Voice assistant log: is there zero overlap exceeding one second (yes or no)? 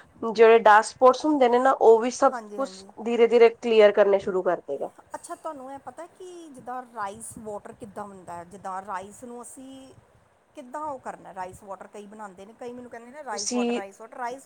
yes